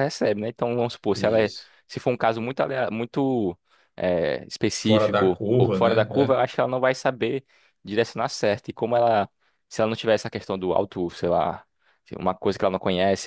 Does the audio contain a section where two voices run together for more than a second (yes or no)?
yes